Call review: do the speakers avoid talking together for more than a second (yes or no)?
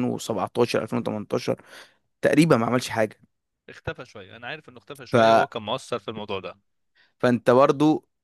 yes